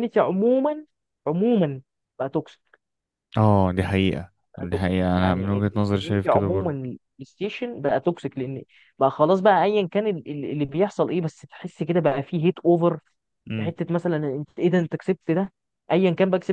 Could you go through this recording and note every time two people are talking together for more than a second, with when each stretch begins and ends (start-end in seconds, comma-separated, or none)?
4.7-6.7